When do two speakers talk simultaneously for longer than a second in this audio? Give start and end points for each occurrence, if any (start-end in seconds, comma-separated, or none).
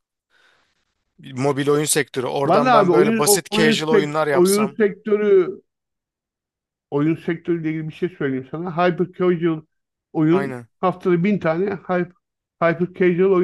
2.5-4.8